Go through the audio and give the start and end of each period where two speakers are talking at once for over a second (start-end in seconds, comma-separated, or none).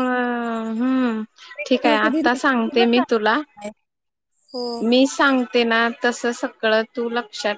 1.7-3.3